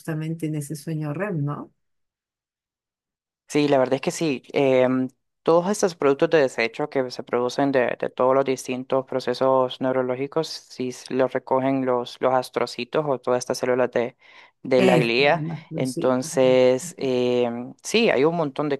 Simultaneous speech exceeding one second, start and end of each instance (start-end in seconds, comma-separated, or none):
14.8-16.6